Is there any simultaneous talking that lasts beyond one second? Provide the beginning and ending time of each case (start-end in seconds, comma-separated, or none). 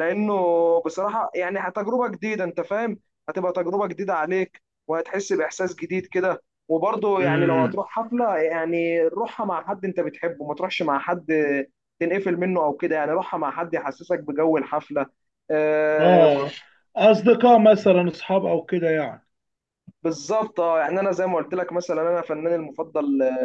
none